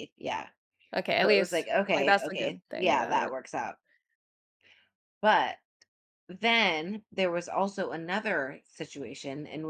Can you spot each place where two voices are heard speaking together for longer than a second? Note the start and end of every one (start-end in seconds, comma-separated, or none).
1.2-3.3